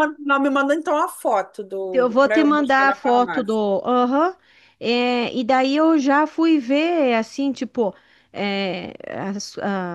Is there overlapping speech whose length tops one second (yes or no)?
yes